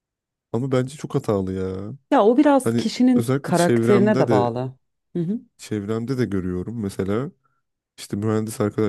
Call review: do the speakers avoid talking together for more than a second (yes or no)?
no